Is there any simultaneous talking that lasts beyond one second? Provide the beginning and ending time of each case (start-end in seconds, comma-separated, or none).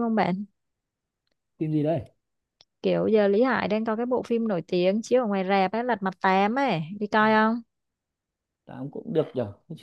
none